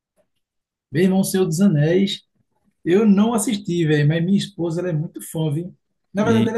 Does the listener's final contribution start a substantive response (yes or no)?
no